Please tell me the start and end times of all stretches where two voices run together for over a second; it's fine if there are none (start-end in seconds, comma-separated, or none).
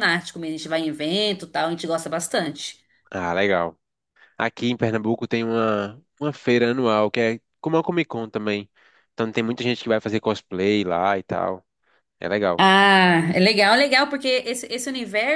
none